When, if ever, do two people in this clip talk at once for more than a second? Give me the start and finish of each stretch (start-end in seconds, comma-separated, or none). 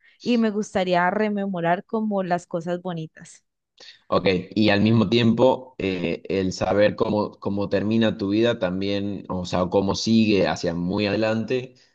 none